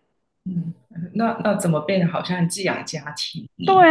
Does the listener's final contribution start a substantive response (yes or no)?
yes